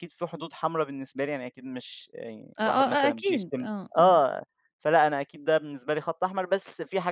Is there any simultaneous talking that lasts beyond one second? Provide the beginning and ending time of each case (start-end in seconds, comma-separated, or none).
2.6-4.1